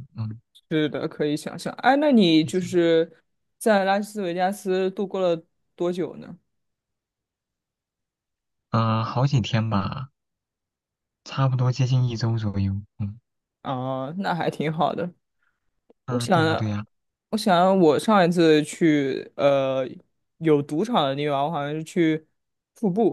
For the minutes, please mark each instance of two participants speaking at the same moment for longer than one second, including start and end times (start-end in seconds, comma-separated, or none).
none